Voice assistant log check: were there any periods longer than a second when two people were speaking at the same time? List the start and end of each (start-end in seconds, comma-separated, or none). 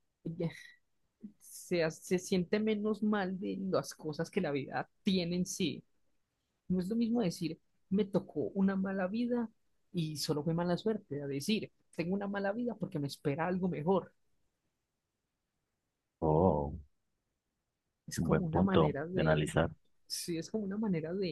18.1-19.5